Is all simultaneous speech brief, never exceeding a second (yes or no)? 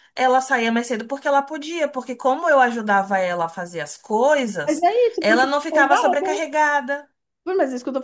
no